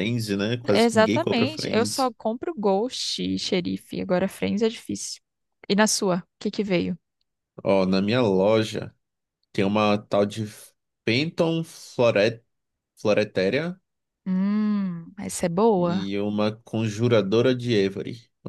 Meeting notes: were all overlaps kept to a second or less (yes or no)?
no